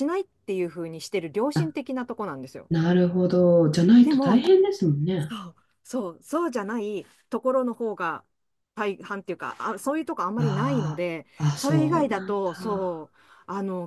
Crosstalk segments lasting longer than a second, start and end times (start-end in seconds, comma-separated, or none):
10.4-13.1